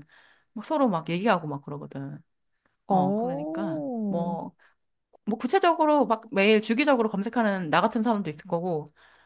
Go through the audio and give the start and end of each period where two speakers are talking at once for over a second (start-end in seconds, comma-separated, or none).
2.9-4.4